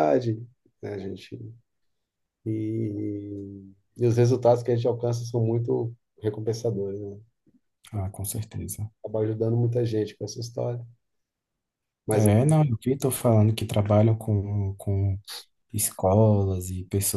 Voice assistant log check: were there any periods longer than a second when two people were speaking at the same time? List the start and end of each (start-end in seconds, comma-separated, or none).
none